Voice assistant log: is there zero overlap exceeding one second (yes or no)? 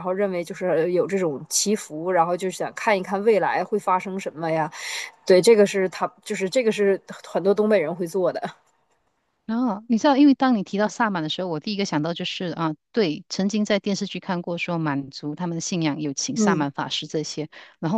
yes